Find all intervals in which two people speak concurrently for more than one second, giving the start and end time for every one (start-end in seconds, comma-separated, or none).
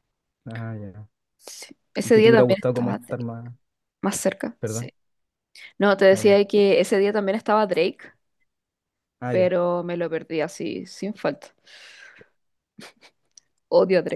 2.0-3.2